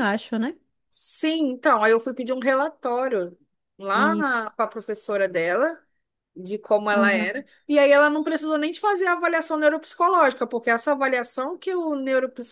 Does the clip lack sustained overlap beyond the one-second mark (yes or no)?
yes